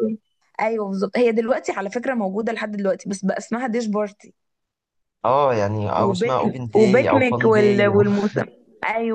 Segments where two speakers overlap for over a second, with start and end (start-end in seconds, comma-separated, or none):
6.0-8.0